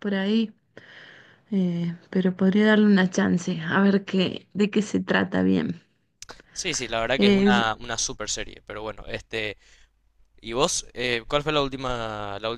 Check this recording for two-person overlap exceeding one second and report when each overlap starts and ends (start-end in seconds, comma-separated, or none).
none